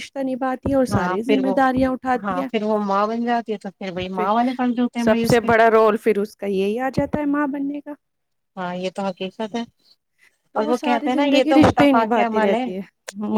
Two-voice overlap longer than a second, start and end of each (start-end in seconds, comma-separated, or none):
10.6-12.6